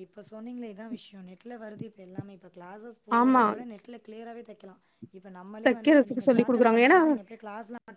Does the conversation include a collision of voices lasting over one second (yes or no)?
yes